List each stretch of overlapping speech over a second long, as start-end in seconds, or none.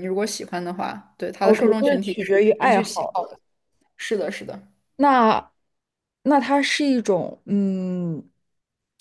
1.4-3.2